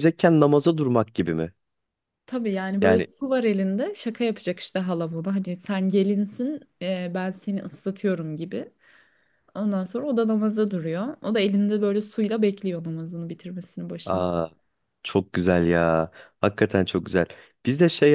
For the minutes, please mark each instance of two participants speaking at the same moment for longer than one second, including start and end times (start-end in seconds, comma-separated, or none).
none